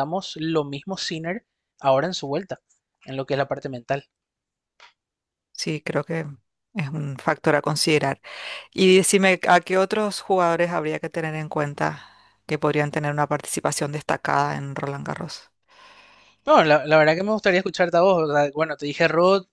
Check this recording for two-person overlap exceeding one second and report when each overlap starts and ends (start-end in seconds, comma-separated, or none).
none